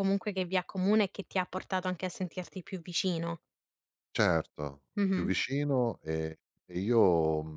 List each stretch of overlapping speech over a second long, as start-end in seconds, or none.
none